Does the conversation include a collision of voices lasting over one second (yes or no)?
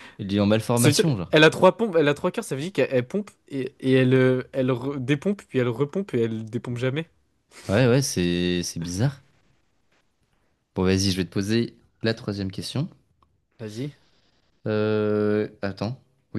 no